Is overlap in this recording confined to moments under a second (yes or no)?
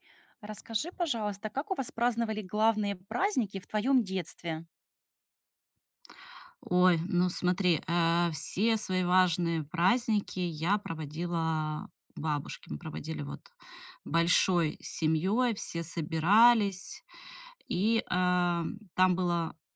yes